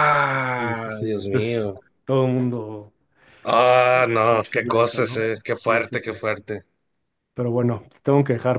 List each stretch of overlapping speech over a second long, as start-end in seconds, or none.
0.6-1.8, 4.3-6.2